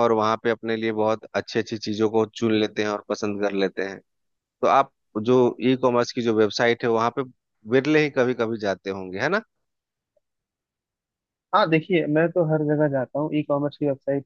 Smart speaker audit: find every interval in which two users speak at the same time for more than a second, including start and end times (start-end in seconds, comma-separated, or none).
none